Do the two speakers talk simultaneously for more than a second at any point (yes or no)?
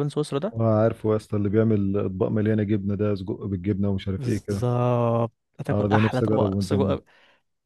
yes